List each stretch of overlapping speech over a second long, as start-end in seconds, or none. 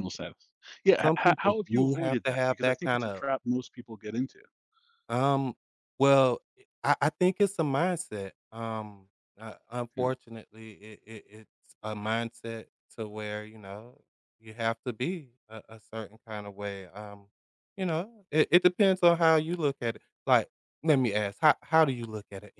1.0-3.2